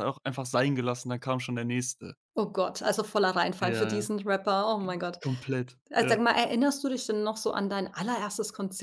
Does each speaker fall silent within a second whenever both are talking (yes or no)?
yes